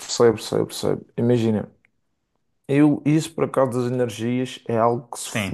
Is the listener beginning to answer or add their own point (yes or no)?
no